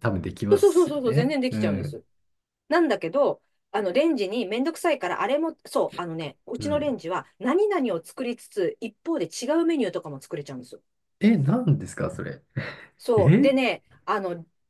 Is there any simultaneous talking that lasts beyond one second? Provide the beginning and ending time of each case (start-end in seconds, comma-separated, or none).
0.5-2.0